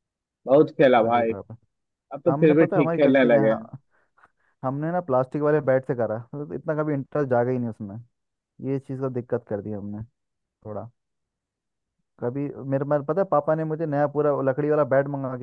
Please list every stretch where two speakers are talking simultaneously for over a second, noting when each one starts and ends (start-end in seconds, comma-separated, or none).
2.3-3.7